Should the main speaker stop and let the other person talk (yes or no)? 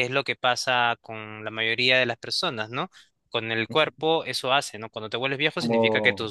no